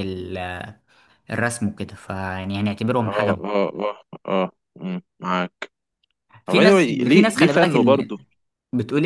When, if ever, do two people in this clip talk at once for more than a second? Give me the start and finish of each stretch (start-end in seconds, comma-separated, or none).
6.5-8.1